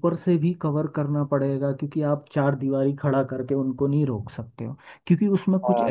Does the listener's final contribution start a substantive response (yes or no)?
no